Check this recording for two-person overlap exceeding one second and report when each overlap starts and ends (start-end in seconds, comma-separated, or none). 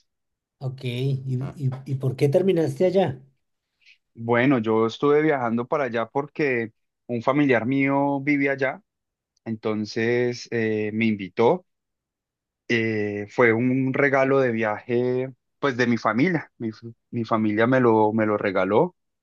none